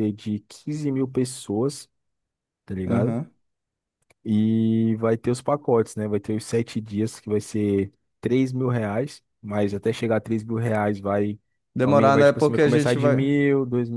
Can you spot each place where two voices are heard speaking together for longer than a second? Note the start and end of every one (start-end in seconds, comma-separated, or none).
11.8-13.3